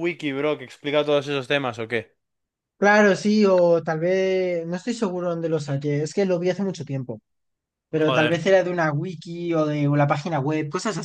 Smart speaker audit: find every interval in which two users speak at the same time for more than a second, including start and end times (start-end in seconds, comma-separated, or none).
none